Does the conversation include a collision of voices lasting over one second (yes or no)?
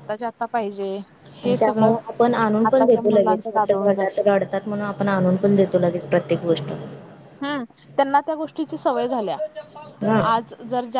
yes